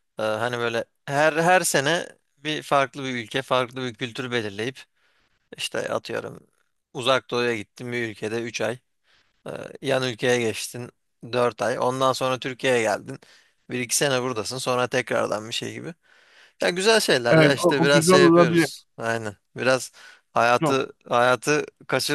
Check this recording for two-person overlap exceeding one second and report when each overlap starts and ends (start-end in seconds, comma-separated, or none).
17.3-18.7